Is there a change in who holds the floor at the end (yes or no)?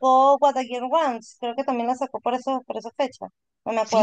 yes